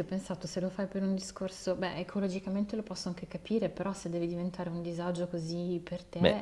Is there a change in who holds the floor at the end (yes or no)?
yes